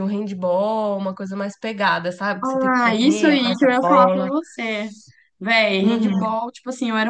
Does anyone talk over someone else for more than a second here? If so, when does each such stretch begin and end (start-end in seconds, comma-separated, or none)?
2.4-4.3